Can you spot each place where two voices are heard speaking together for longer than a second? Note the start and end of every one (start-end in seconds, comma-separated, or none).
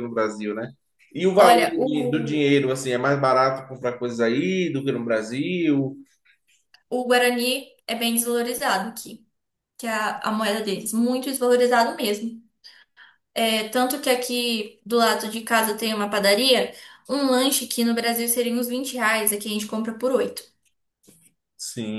1.3-2.6